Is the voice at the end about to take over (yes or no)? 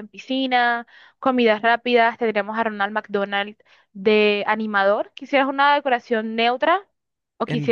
yes